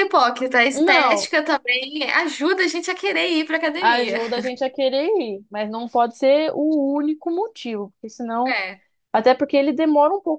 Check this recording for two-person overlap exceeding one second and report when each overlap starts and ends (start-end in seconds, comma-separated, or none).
none